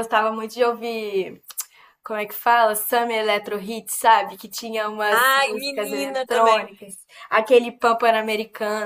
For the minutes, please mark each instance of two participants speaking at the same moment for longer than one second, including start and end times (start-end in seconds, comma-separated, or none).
5.1-6.7